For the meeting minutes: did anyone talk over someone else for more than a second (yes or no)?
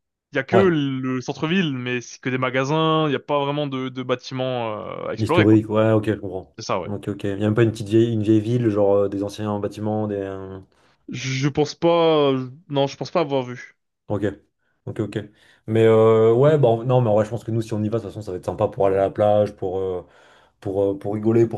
no